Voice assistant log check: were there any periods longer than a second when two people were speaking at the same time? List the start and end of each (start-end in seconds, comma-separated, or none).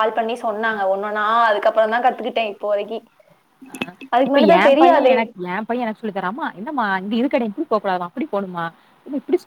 none